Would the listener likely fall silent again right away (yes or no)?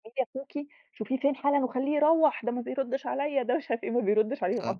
no